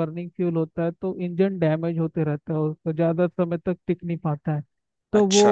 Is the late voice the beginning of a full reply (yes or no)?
no